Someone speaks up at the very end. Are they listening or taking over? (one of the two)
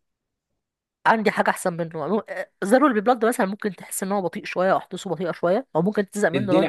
taking over